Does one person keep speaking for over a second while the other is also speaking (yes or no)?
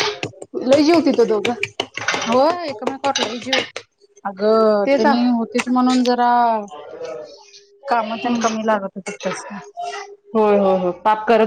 no